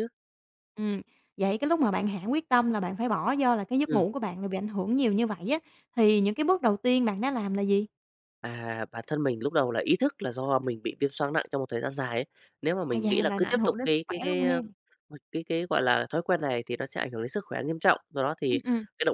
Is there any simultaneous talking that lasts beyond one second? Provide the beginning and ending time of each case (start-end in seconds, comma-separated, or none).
12.9-14.6